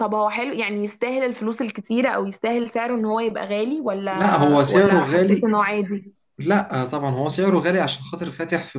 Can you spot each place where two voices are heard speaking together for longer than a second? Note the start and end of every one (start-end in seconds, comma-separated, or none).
4.1-5.5